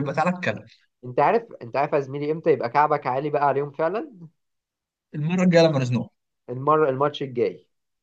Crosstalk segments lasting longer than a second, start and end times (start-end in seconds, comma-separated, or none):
none